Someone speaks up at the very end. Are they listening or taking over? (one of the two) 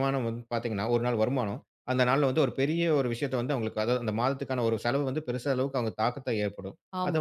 listening